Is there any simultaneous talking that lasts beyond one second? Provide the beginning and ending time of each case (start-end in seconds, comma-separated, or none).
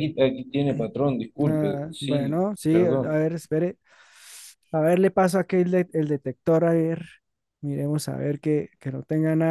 1.5-3.2